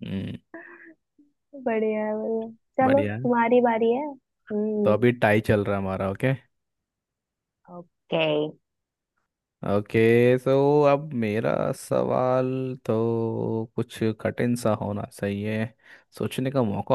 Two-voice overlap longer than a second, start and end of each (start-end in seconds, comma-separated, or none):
none